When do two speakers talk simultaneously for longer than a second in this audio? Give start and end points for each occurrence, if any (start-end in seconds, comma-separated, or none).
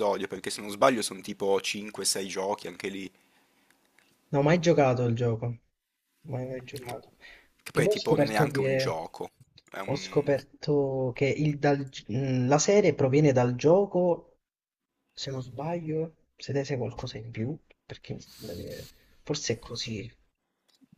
7.7-9.0